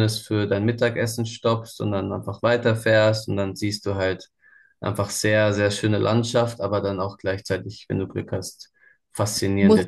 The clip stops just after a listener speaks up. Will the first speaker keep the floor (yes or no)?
yes